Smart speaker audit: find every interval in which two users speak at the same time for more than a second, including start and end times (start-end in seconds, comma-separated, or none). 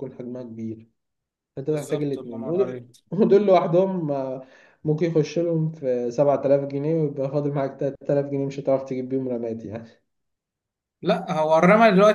1.6-2.9